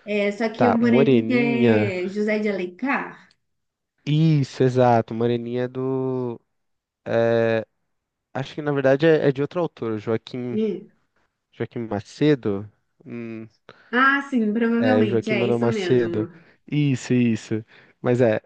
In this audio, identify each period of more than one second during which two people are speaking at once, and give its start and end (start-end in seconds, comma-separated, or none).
0.6-1.9, 14.8-16.3